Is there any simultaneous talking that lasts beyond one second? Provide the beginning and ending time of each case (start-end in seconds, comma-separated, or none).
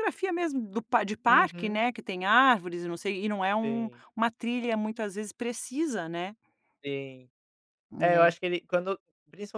none